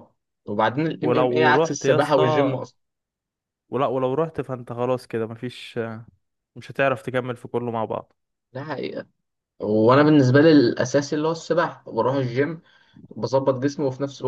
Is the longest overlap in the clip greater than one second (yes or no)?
yes